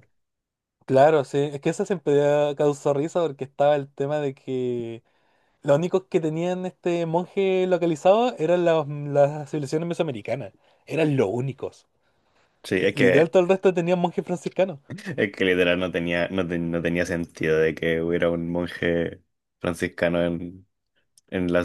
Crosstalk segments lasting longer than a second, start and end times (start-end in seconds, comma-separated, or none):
none